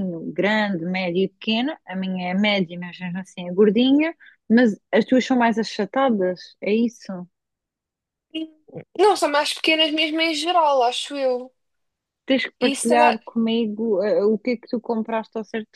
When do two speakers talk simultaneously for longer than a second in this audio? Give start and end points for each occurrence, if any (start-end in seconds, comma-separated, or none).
none